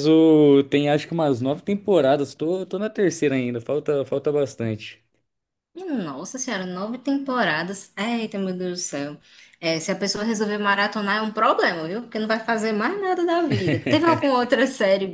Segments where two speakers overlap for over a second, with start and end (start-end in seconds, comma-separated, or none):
none